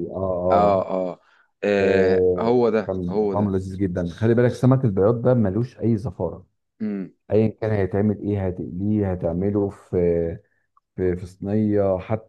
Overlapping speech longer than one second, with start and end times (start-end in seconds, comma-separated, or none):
1.8-3.6